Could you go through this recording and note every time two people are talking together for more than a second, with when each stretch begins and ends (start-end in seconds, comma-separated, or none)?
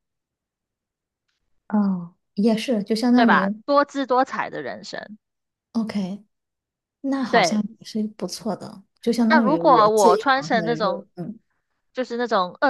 9.3-11.1